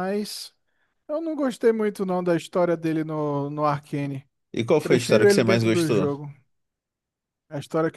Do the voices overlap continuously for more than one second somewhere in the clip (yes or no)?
yes